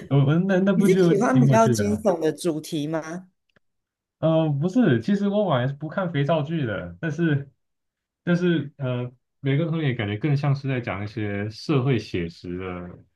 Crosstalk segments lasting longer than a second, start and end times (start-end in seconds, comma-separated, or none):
0.7-2.0